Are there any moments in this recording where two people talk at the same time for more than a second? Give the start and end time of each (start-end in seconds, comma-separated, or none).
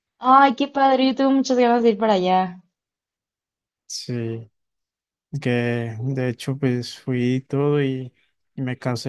none